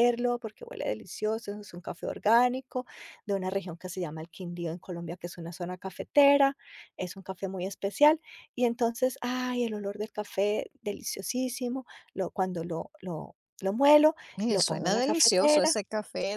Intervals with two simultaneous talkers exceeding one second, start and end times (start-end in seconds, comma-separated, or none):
14.4-15.8